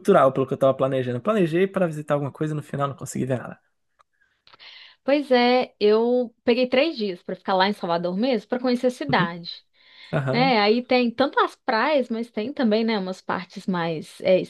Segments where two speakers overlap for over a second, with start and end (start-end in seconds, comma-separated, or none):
none